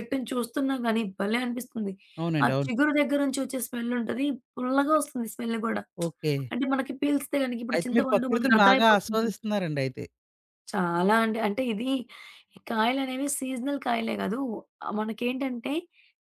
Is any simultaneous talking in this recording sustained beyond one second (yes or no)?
yes